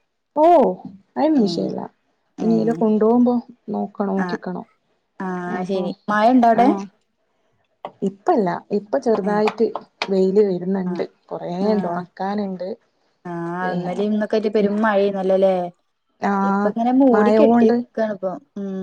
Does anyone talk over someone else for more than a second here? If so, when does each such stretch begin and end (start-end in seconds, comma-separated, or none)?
none